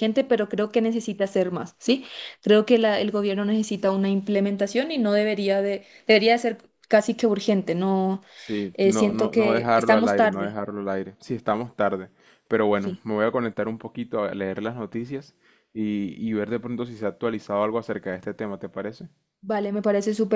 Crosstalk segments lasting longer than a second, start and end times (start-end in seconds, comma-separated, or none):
8.8-10.6